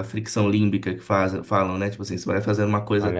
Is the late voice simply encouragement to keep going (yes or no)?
yes